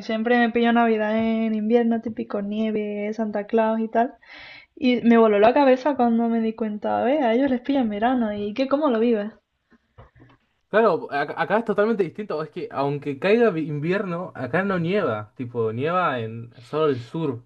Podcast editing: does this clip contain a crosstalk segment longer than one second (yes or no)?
no